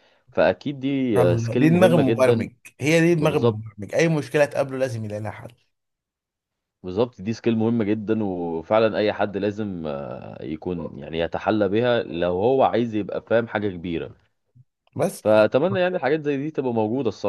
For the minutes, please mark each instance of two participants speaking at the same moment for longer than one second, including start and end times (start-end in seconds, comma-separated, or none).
1.2-2.5